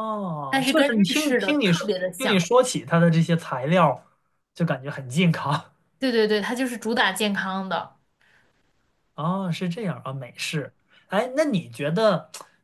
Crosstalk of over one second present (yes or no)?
yes